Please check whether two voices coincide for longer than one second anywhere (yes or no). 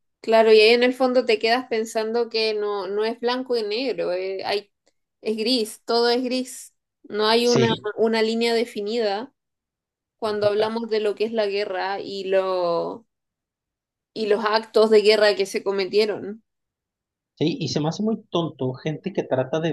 no